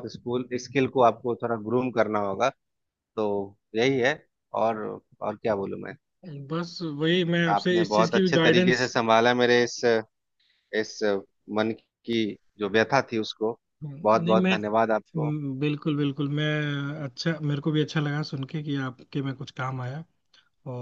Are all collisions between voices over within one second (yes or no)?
no